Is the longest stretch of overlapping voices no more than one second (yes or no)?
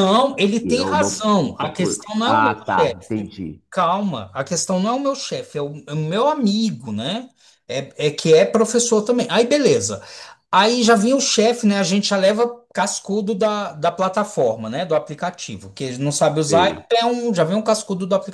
no